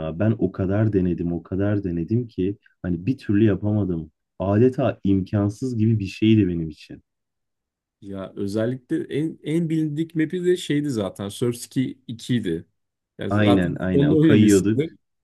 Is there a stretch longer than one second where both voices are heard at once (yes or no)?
yes